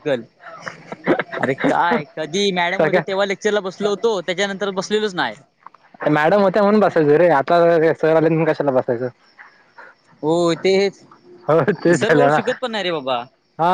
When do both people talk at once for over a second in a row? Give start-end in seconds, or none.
none